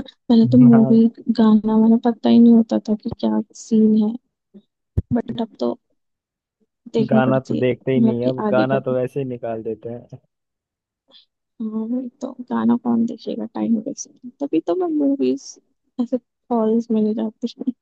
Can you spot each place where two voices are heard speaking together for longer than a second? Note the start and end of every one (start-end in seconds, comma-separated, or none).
7.1-8.9